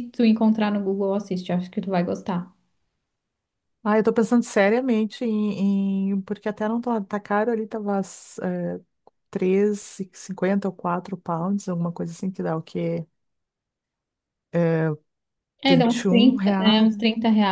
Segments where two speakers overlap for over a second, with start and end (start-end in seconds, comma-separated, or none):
15.7-17.0